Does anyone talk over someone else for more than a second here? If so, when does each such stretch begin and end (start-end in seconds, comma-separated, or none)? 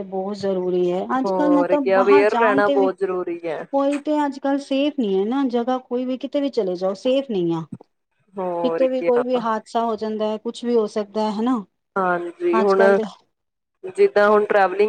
1.2-2.9